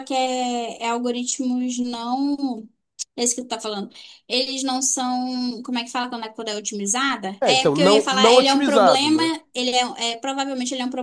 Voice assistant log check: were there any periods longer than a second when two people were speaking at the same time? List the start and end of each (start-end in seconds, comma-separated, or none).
7.4-9.3